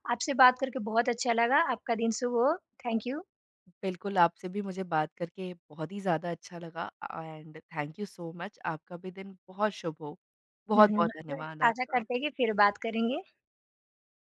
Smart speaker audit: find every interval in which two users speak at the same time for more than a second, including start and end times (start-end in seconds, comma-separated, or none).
10.8-12.0